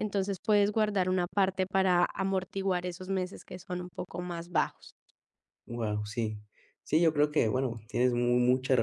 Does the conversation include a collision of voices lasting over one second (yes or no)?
no